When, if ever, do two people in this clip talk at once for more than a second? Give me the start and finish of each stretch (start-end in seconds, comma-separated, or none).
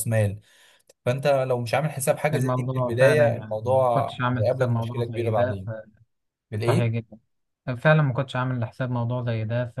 2.3-5.6